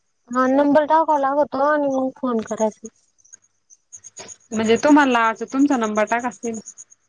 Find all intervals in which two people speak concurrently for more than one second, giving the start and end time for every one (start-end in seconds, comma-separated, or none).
none